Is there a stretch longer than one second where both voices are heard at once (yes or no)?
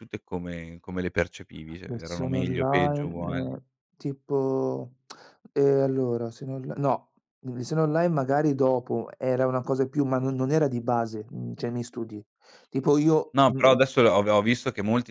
yes